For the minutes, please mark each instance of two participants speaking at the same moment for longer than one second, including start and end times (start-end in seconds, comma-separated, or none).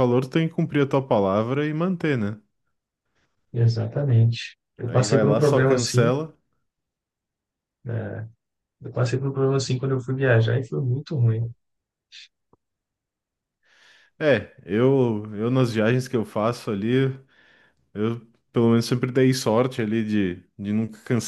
4.8-6.1